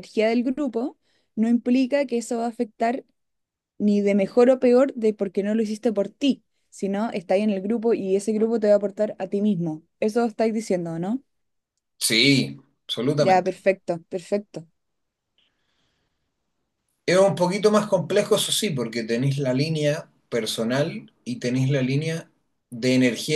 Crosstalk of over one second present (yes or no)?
no